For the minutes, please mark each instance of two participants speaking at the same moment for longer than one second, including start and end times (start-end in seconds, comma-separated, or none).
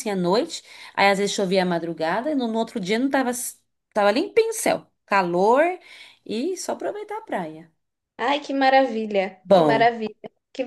none